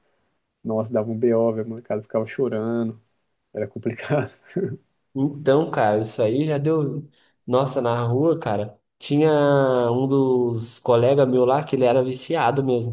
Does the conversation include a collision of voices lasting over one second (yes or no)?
no